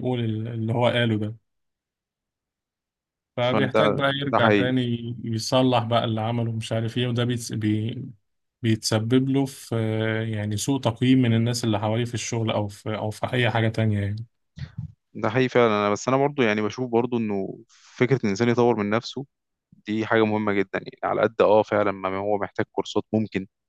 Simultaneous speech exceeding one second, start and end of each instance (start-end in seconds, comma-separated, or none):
3.4-4.7